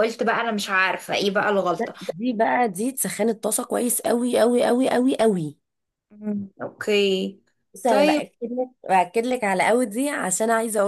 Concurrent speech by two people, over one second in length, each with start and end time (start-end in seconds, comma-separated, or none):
none